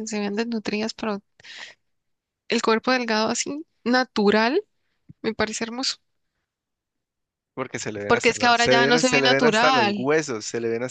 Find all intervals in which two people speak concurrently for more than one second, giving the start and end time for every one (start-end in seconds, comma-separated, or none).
8.1-10.1